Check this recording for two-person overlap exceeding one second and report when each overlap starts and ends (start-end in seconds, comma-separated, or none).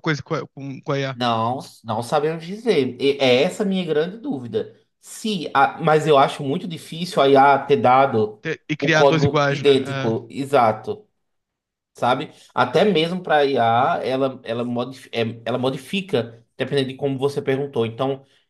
8.8-10.2